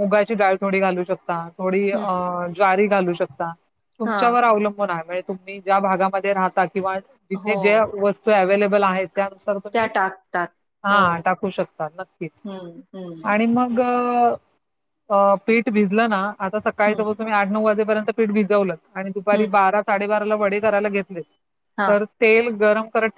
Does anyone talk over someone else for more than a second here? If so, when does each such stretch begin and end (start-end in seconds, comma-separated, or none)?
none